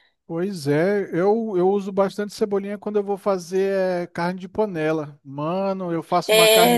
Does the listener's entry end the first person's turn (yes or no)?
yes